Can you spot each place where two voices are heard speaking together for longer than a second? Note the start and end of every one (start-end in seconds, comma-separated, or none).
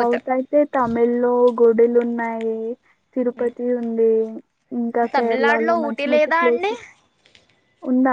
5.2-6.7